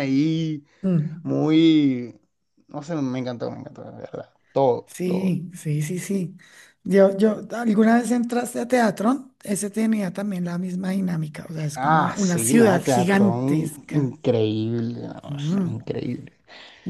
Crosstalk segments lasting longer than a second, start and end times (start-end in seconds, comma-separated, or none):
11.8-14.1